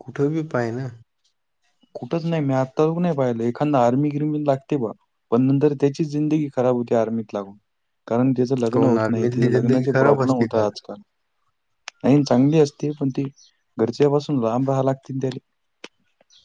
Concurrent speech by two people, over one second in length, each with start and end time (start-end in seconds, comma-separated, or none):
8.7-10.6